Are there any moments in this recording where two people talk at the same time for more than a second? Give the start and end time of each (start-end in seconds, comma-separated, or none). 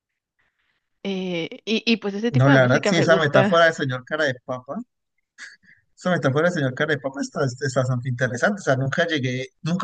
2.3-3.6